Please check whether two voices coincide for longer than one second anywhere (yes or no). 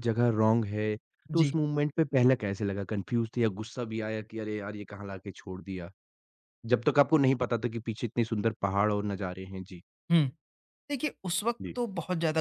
no